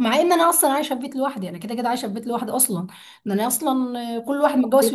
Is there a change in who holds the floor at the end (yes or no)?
no